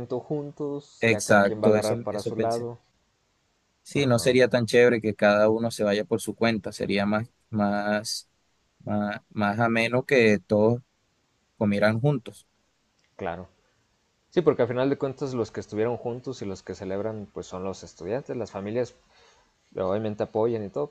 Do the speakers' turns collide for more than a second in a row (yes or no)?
yes